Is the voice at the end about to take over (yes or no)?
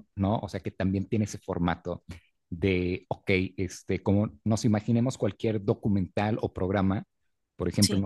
no